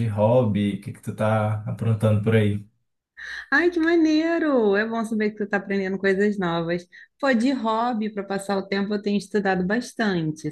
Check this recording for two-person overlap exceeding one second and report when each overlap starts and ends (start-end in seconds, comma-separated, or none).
none